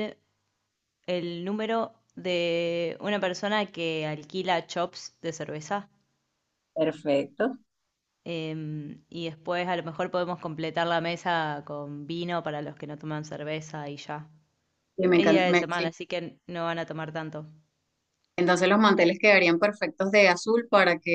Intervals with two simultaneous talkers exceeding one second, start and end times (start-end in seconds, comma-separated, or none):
none